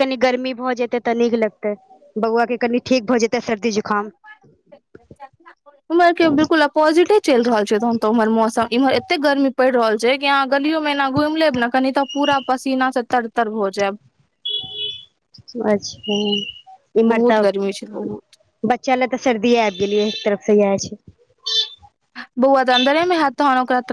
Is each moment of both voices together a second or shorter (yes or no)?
yes